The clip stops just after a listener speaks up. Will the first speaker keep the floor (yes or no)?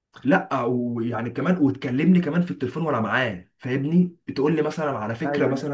yes